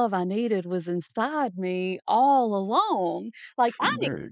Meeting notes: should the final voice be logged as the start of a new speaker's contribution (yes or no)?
no